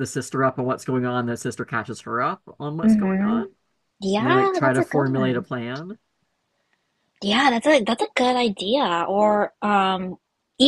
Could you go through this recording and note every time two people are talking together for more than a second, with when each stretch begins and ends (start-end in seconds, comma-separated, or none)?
4.2-5.5